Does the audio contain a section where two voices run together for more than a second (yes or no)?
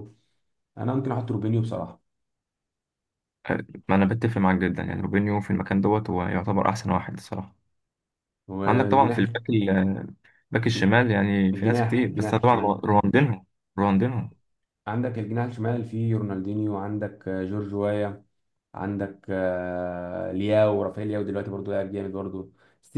yes